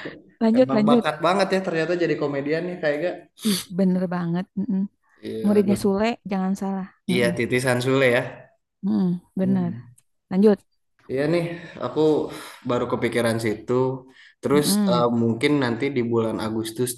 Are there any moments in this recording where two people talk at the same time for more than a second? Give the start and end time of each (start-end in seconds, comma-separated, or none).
none